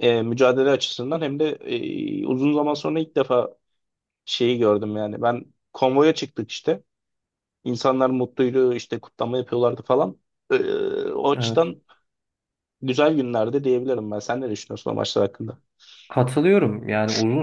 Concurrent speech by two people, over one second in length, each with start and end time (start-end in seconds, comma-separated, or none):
none